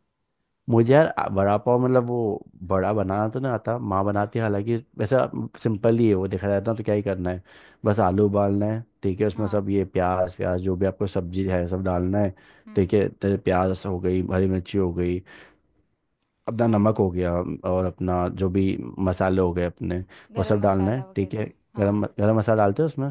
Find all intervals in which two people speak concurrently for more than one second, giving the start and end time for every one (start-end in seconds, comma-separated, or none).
20.4-21.9